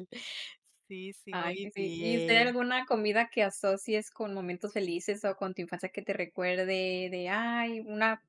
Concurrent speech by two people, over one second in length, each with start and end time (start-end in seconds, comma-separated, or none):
1.3-2.5